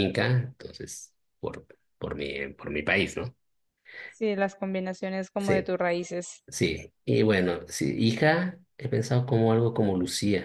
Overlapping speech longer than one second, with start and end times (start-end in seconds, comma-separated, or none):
none